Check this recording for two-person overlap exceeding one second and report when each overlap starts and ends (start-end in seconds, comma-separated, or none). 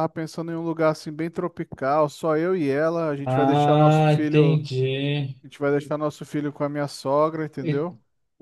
3.2-4.6